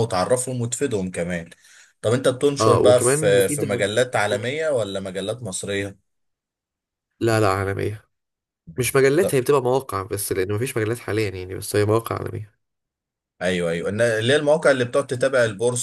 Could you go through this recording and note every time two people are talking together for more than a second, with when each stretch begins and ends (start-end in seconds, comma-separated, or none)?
2.6-3.8